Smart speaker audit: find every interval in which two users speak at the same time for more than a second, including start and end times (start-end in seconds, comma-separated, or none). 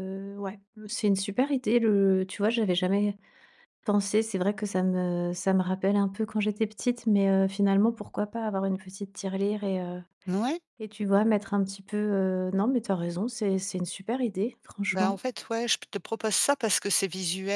none